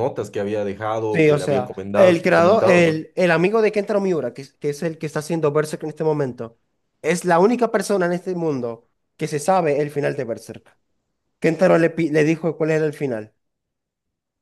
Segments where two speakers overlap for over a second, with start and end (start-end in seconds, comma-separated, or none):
1.1-3.0